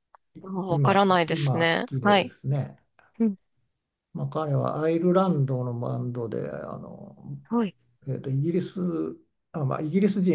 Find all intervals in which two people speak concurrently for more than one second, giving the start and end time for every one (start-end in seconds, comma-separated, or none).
0.7-2.3